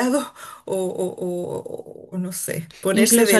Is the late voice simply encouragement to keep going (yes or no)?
yes